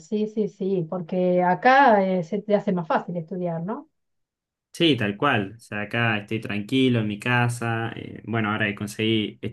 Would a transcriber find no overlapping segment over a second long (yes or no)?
yes